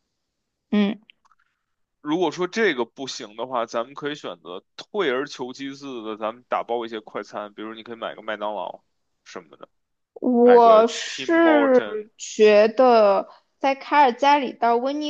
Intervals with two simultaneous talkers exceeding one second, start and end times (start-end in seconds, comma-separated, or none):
10.4-12.1